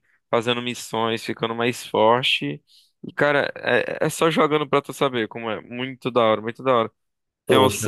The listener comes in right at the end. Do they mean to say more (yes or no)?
no